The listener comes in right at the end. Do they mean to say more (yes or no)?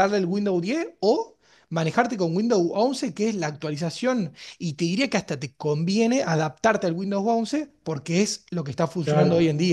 yes